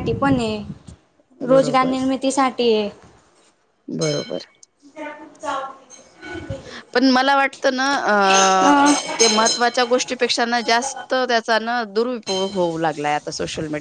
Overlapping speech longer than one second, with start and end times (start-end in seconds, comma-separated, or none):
none